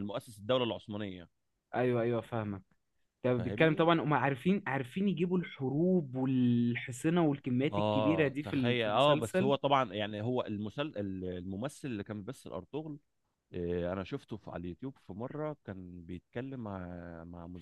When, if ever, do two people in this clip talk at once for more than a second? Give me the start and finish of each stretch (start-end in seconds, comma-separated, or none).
7.7-9.5